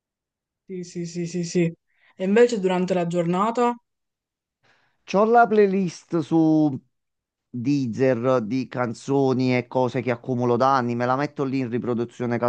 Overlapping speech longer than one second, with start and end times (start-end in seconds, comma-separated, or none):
none